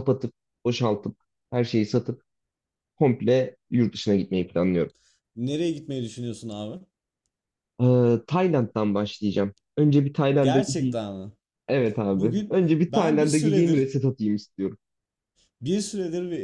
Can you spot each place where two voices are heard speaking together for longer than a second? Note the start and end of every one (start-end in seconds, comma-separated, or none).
12.1-13.9